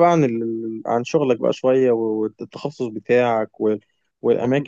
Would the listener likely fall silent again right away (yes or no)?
yes